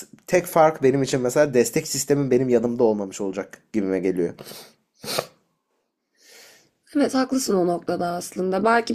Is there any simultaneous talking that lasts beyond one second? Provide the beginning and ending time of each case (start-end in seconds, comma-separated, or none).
none